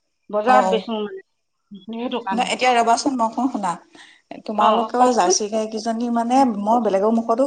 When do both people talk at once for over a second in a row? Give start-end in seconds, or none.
none